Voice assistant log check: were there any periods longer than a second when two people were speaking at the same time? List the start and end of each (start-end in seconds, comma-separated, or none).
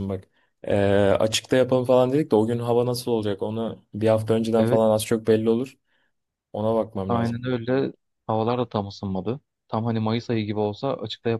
none